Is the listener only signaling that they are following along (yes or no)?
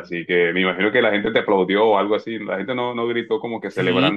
no